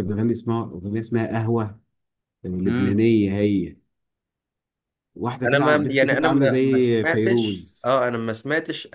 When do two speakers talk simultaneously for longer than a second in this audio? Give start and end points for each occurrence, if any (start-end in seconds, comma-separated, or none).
5.4-7.9